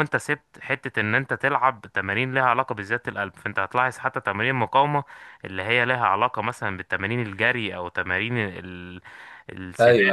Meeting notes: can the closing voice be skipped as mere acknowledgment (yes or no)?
yes